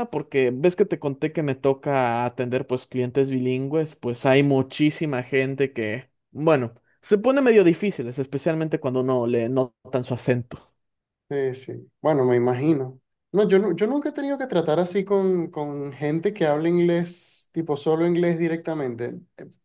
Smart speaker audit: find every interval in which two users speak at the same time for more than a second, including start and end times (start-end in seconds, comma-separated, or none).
none